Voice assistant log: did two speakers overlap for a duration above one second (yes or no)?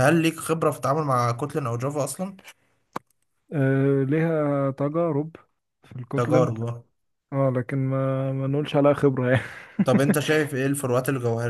no